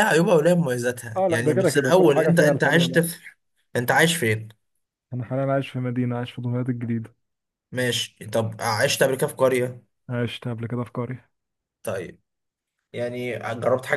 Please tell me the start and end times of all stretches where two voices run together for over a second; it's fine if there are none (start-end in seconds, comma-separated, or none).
1.2-3.0